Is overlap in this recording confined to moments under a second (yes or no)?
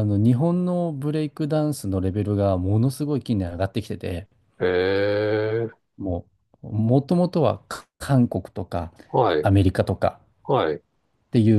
yes